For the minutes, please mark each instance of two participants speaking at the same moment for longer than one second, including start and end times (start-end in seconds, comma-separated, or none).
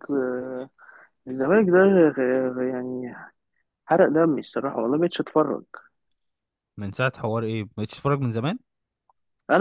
none